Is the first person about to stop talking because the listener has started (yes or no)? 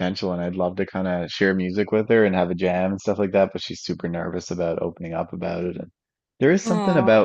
no